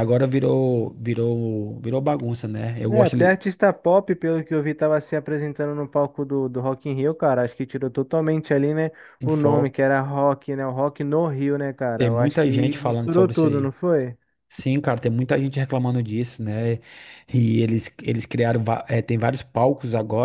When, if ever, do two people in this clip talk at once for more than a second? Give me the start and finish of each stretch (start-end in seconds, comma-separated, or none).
12.0-13.7